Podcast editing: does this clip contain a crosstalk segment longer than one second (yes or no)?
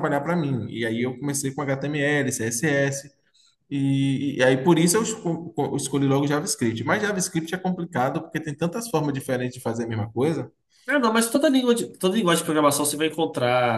no